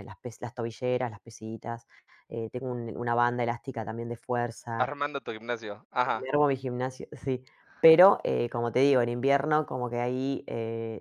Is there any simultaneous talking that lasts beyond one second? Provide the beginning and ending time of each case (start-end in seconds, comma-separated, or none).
none